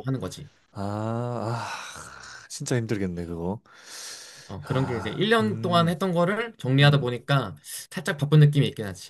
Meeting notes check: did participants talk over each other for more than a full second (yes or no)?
yes